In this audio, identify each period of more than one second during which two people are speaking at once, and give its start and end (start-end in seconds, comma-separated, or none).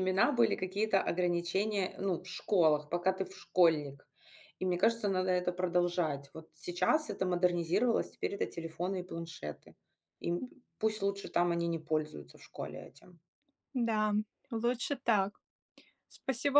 none